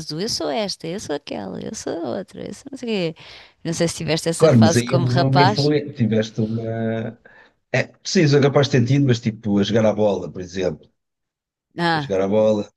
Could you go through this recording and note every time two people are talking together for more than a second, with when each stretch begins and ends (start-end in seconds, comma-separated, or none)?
4.4-5.7